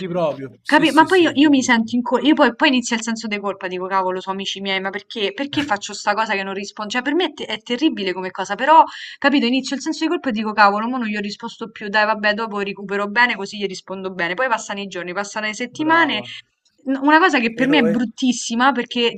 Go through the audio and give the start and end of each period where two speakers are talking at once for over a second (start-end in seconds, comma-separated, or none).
0.6-1.9